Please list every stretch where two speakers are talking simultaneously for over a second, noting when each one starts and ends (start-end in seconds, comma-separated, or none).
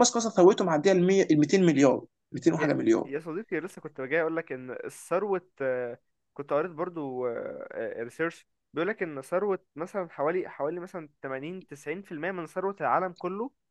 none